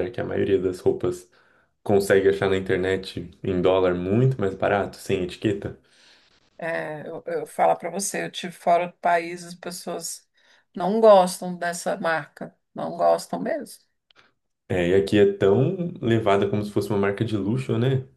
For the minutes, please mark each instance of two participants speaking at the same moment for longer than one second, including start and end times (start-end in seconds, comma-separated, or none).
none